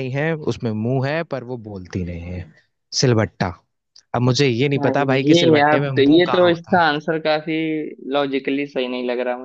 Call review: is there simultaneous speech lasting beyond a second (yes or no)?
yes